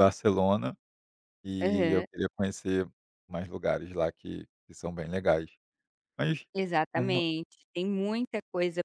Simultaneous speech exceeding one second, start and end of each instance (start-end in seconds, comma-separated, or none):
none